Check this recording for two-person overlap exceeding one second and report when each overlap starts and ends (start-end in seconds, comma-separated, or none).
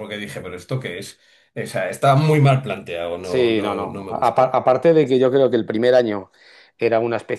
3.2-4.6